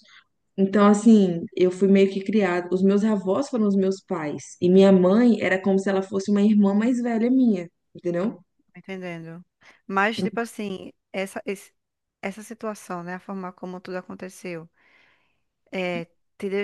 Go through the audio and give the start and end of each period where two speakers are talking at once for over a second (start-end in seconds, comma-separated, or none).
none